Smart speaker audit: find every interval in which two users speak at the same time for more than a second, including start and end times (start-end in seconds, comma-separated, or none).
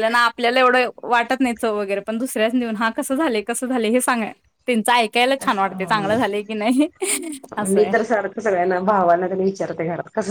none